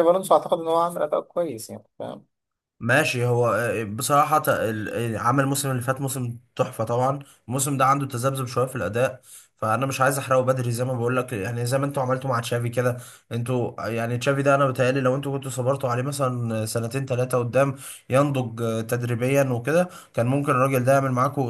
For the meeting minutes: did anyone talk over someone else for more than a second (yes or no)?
no